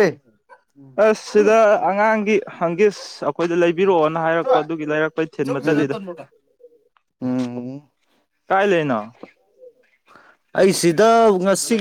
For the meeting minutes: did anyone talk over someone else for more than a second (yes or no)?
no